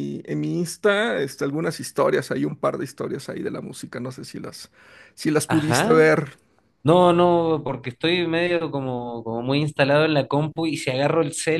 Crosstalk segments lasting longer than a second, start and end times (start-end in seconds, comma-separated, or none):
none